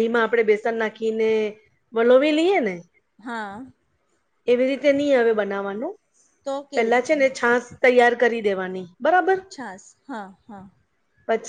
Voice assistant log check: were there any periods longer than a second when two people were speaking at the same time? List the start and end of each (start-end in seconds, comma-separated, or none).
none